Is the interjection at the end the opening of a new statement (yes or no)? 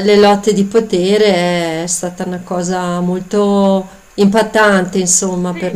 yes